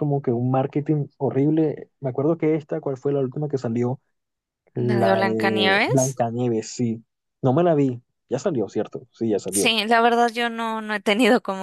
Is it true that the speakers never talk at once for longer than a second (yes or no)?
no